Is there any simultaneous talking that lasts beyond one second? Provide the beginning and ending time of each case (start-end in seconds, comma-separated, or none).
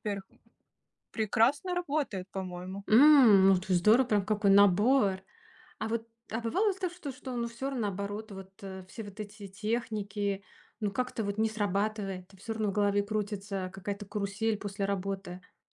none